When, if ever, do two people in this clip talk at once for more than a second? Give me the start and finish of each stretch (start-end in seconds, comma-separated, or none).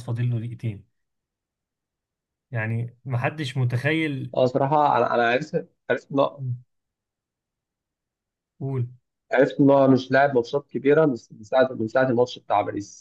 none